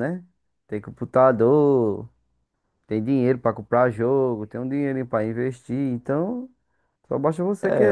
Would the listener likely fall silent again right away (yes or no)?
no